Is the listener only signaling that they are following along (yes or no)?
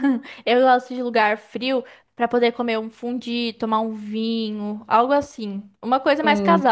yes